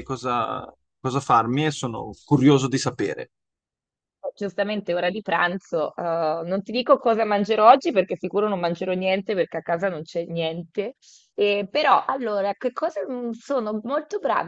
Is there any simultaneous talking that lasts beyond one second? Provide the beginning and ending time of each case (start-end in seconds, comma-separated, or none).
none